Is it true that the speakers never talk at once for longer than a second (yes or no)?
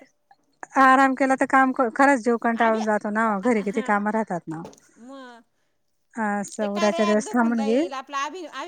no